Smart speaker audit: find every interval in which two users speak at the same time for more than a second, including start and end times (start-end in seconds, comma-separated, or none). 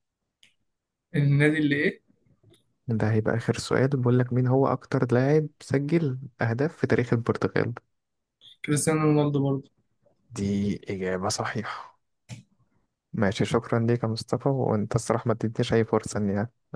none